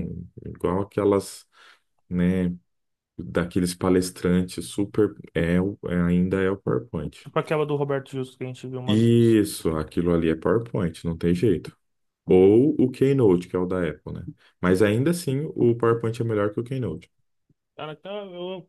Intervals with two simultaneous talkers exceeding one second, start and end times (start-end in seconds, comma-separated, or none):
none